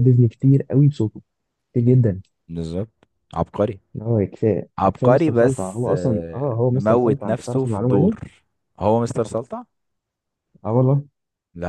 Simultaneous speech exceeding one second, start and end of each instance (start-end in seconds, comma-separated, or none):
4.8-8.2